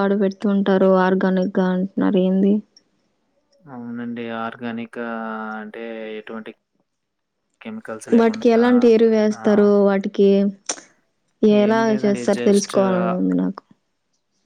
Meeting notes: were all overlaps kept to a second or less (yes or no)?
yes